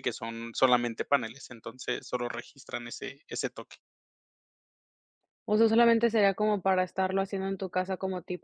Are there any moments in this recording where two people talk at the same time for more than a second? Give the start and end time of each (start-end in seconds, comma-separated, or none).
none